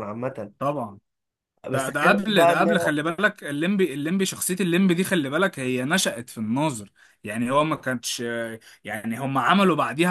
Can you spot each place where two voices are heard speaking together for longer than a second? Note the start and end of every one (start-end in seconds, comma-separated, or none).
1.7-3.0